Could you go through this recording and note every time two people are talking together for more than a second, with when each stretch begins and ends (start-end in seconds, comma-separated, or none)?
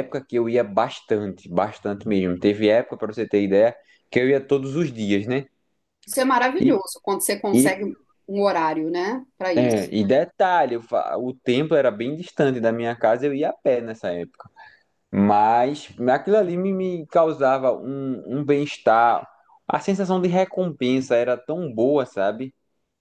none